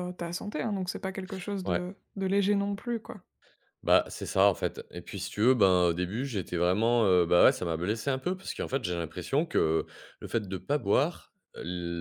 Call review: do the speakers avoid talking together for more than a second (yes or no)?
yes